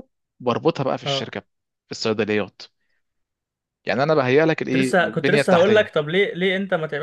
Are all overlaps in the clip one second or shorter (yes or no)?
no